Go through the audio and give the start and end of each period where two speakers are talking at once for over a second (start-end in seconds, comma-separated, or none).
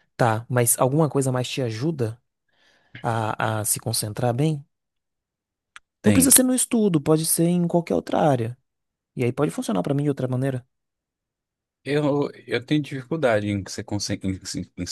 none